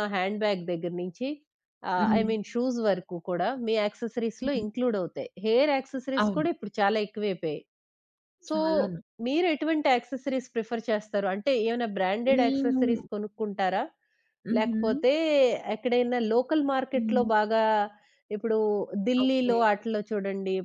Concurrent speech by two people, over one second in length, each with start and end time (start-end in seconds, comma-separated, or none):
none